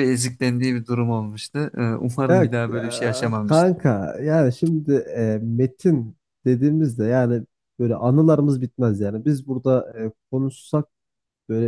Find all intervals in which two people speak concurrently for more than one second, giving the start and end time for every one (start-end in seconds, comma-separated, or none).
2.3-3.7